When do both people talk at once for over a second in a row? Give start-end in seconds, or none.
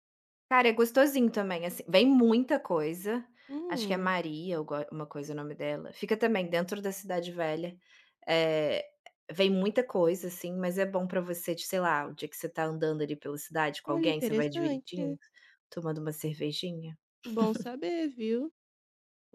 13.9-15.2